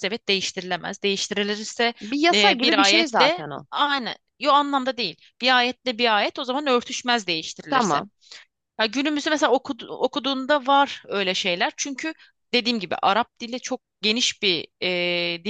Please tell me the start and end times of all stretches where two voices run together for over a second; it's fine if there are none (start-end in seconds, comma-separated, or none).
2.3-3.7